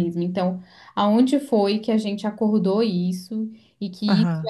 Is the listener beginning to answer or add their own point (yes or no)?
no